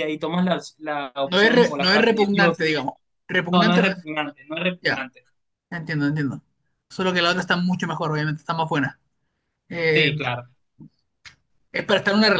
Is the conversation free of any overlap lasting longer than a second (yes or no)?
no